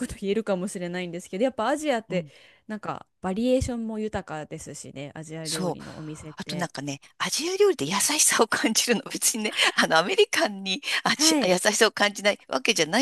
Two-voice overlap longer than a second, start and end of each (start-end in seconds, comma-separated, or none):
none